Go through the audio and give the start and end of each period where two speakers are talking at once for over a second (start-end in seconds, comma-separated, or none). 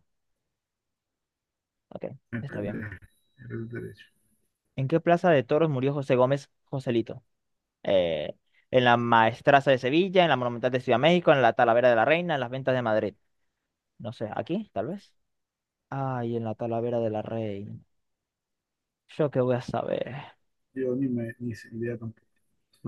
none